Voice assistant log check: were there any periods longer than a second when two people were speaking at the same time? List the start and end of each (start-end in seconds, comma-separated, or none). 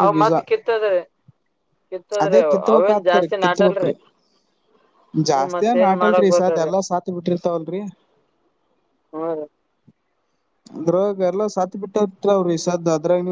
2.2-3.9